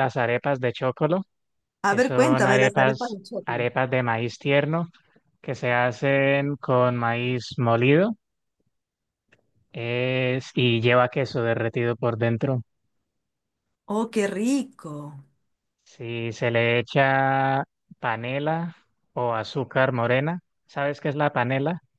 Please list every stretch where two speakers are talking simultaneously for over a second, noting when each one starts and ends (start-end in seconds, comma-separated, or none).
1.9-3.6